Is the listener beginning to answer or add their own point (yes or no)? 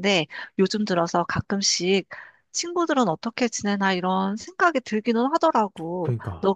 no